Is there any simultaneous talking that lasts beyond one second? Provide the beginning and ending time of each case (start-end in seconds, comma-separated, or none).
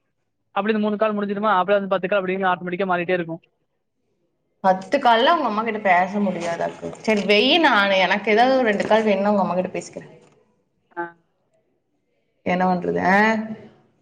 none